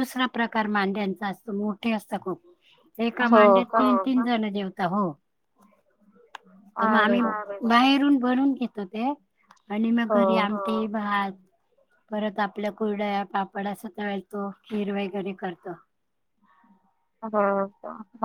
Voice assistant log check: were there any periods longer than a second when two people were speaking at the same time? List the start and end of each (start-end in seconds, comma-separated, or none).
none